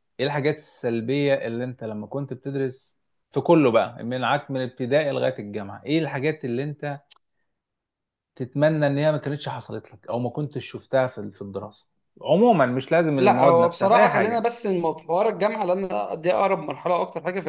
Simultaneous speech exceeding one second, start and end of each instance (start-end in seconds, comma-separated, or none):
13.2-14.5